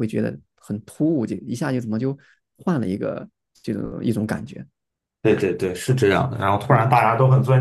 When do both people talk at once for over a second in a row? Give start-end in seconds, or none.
none